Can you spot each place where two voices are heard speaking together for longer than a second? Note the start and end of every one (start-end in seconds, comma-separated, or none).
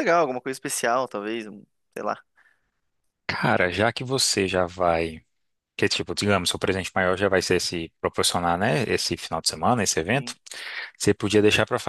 none